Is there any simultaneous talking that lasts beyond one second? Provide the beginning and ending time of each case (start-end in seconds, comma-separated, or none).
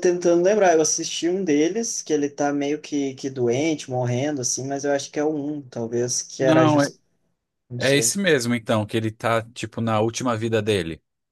none